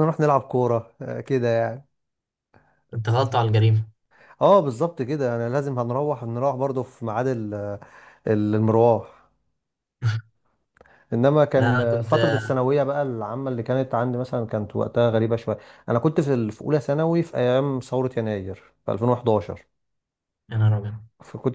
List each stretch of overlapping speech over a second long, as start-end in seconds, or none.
none